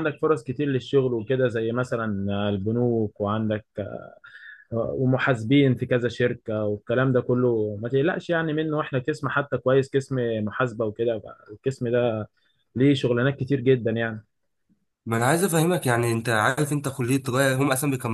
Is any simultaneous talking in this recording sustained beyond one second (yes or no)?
no